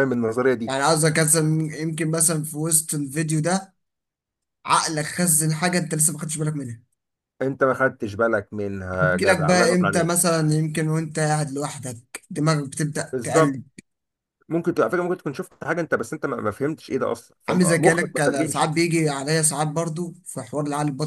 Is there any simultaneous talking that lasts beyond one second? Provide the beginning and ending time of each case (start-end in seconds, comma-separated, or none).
9.0-10.3, 17.5-18.7